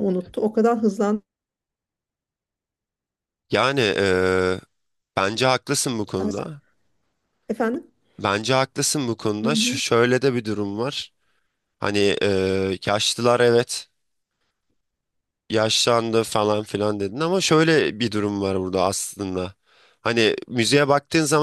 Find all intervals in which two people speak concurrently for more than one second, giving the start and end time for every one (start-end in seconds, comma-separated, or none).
none